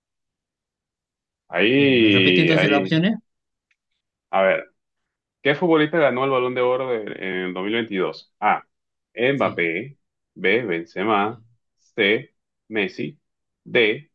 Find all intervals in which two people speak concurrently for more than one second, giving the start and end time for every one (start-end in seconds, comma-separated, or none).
1.8-3.0